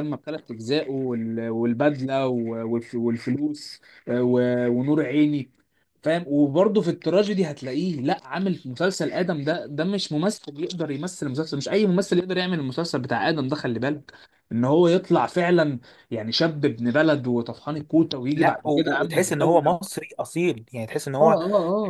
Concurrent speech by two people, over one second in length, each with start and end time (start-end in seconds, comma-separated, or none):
18.4-19.8